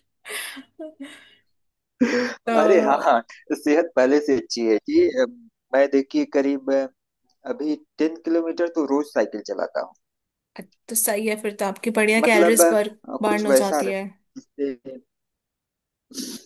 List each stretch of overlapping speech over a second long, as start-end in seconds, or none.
12.2-14.0